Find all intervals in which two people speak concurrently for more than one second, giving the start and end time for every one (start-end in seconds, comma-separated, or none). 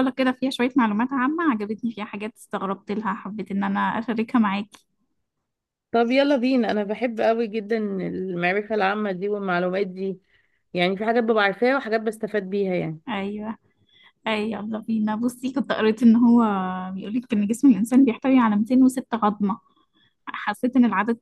none